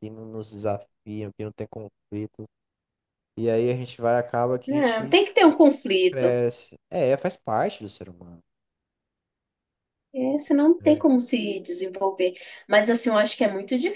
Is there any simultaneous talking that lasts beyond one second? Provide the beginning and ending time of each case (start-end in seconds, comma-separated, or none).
none